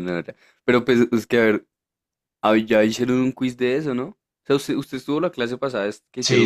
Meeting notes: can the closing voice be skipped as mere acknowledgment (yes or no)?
no